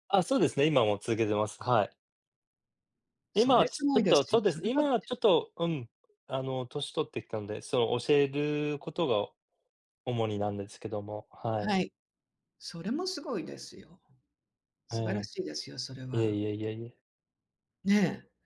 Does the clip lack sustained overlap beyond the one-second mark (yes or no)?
no